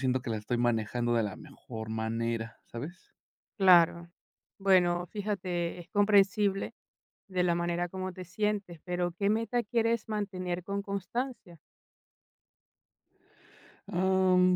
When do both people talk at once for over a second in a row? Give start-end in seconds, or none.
none